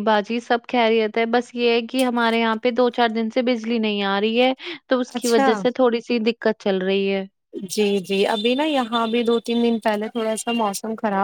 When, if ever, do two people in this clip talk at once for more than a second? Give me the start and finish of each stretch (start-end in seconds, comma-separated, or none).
none